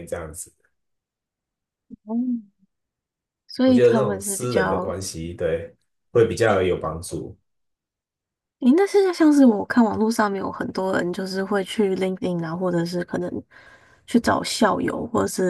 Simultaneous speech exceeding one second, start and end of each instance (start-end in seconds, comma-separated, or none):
3.6-5.0